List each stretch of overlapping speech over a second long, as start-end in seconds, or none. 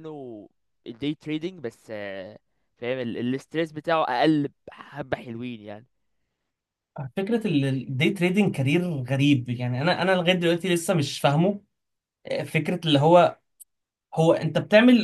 none